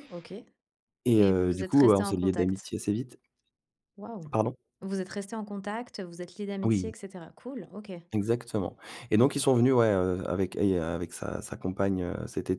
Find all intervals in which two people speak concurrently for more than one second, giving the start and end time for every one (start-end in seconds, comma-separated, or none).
1.2-2.7